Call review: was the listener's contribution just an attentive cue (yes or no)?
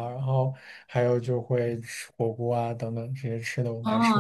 no